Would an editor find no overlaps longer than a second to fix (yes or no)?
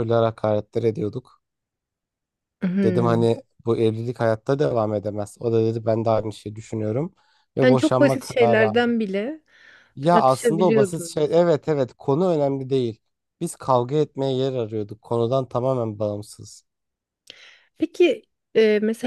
no